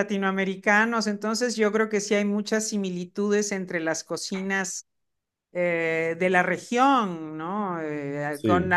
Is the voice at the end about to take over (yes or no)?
no